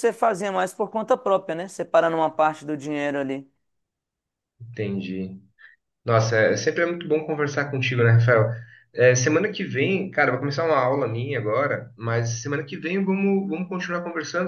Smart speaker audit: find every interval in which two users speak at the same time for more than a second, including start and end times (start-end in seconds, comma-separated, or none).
none